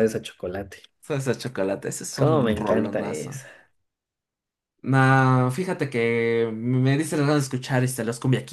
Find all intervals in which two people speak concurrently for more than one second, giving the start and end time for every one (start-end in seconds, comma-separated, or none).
2.1-3.4